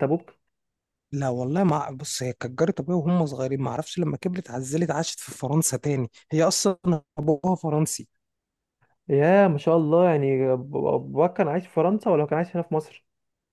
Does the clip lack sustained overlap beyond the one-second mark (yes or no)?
yes